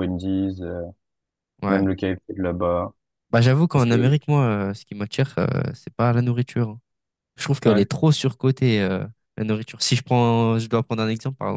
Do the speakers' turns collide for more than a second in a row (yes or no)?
no